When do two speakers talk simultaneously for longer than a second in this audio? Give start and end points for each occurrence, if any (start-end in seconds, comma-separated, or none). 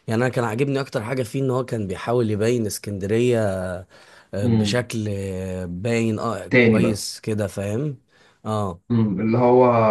none